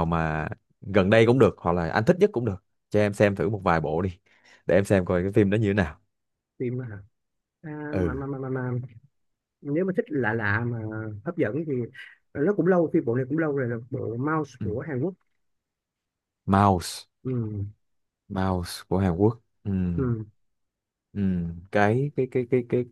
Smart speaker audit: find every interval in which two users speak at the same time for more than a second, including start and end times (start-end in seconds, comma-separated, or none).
none